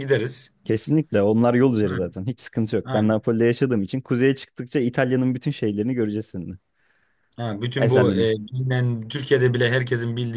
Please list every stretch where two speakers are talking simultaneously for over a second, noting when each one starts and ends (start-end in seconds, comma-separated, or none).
none